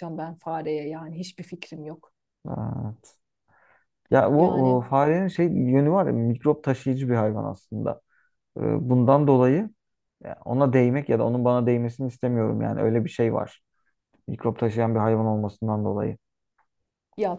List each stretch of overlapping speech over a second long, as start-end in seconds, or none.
none